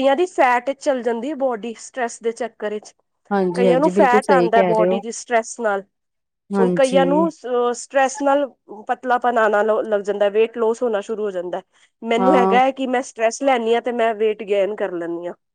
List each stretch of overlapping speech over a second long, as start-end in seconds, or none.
3.5-5.0